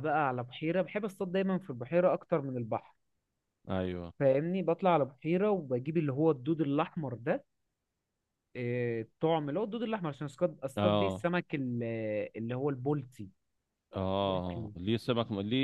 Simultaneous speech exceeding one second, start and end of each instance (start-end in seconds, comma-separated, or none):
none